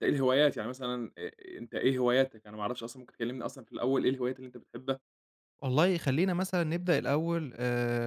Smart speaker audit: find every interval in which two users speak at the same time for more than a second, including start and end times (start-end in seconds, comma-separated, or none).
none